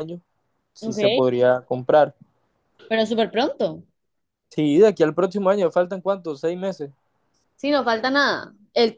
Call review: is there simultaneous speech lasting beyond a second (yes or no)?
no